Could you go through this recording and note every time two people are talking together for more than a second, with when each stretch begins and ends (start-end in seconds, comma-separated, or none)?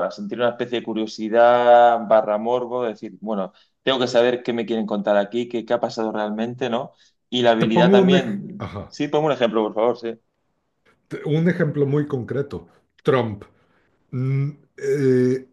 7.6-8.9